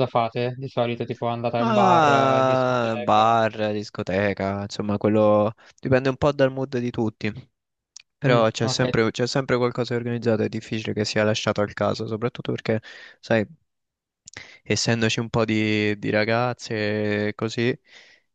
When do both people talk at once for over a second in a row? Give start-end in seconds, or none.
1.6-3.4